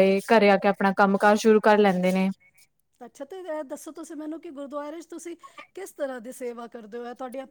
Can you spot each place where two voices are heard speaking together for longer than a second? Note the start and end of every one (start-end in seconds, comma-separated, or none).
none